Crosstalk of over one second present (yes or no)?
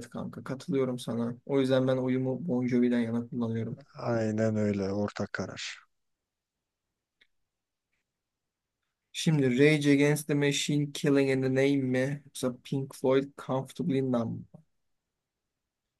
no